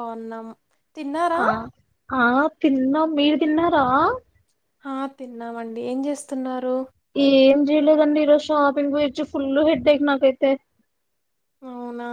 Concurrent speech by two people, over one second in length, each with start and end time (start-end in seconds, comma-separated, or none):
none